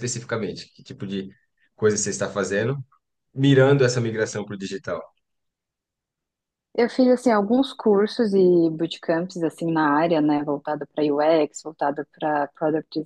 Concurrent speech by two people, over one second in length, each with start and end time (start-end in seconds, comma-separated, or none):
none